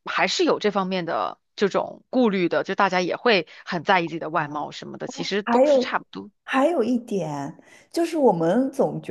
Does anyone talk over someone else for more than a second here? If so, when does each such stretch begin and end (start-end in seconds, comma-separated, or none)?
none